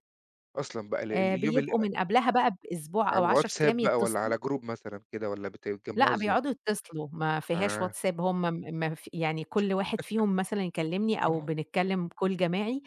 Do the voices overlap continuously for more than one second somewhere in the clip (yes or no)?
yes